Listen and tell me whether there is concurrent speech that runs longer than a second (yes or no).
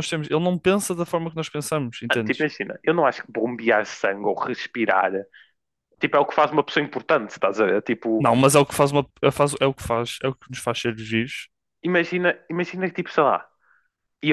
no